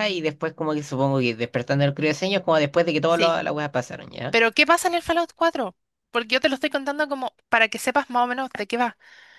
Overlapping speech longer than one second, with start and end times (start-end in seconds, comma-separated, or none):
none